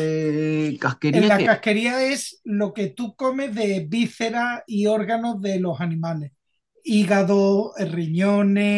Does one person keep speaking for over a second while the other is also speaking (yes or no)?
no